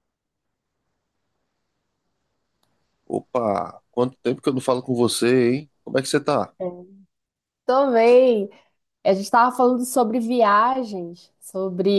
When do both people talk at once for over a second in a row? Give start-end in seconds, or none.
none